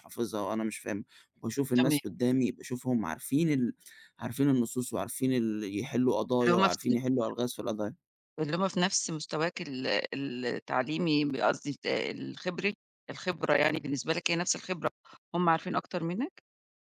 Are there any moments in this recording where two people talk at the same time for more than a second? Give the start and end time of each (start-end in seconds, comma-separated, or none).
none